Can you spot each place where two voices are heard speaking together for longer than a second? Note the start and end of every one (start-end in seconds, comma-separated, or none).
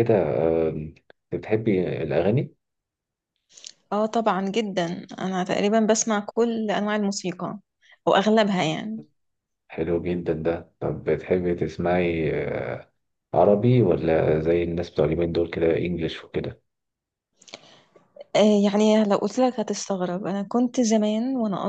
none